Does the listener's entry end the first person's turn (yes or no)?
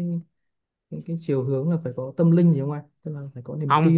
yes